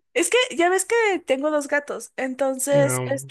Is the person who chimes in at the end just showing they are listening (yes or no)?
yes